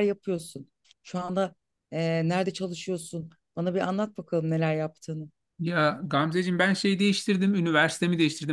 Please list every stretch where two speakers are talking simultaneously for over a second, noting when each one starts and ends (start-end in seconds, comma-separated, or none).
none